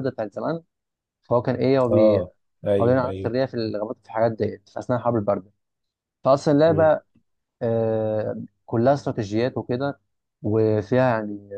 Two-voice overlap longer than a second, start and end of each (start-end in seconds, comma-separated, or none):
none